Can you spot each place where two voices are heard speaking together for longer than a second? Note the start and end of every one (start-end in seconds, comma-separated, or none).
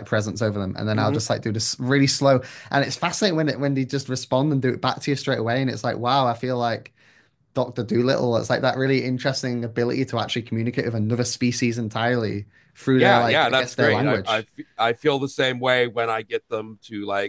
12.9-14.5